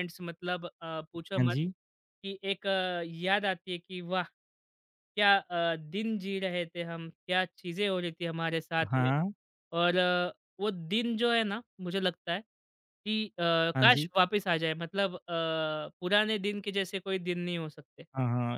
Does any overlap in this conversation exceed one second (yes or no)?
no